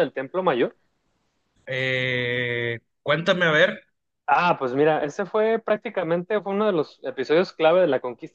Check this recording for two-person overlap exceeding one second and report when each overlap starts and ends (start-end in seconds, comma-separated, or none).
none